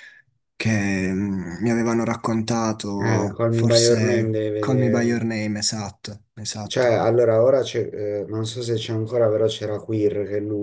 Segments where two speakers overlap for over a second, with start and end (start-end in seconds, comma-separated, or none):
3.0-5.2